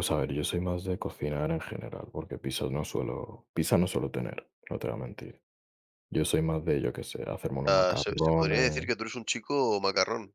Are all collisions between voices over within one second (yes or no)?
no